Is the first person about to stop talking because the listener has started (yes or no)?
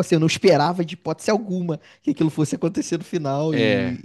no